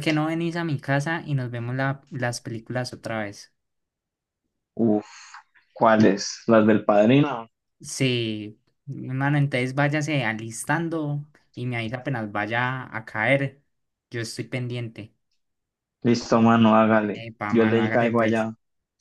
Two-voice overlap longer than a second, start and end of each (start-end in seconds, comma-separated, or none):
17.1-18.5